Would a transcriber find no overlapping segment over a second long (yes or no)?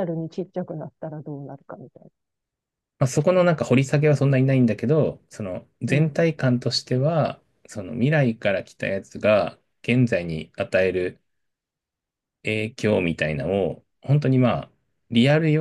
yes